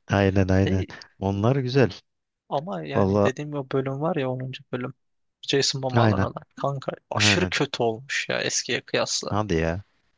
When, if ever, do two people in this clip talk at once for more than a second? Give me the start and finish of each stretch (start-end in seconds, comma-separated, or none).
none